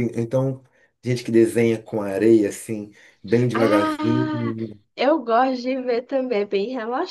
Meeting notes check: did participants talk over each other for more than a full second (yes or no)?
no